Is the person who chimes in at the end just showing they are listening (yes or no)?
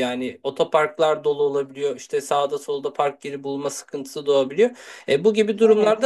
yes